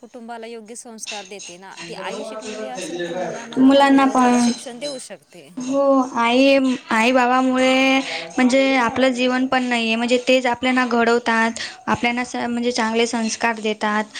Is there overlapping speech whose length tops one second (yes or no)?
no